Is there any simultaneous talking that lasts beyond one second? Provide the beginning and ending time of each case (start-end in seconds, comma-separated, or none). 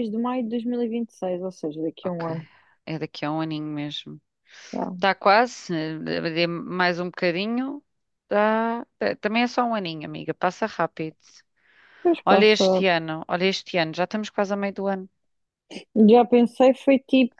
none